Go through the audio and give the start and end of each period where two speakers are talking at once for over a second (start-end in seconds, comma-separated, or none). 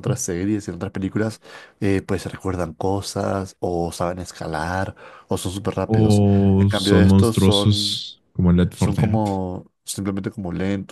5.9-8.0